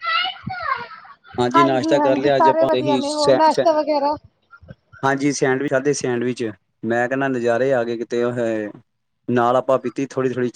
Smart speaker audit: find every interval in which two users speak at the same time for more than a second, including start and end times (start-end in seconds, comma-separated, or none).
2.4-3.6